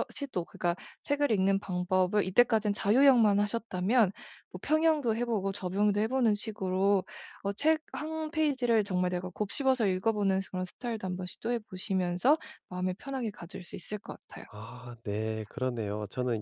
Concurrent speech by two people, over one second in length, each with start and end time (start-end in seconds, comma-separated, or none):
none